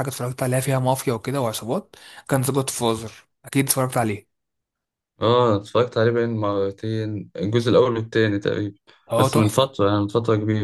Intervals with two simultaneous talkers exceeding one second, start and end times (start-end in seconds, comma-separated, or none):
none